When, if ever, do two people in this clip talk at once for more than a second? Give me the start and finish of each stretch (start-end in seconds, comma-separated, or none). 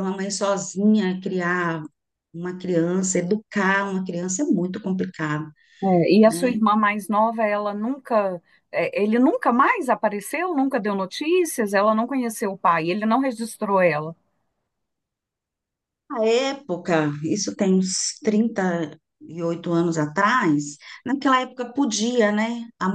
none